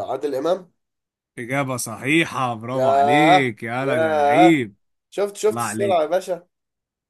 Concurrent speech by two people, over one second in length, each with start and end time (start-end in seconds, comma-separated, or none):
2.7-4.6